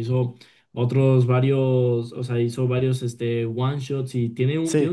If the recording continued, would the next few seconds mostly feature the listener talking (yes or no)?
no